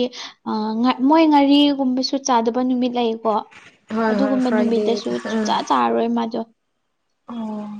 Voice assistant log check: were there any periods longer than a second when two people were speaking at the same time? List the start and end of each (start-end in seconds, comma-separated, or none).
4.1-5.5